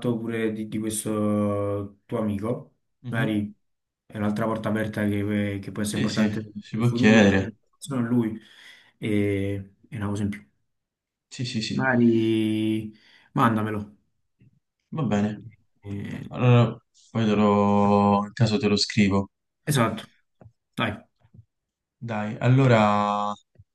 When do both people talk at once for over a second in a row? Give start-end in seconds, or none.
5.8-7.5